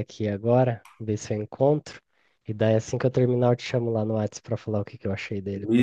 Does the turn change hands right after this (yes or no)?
yes